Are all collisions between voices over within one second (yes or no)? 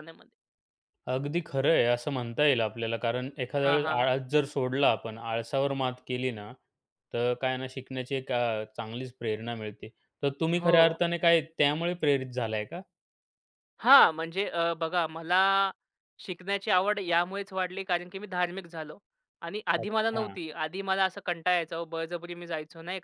yes